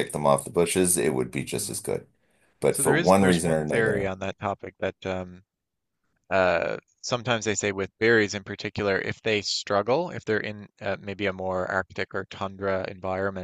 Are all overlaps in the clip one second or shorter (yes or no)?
no